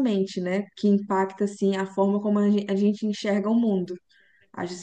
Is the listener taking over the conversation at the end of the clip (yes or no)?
no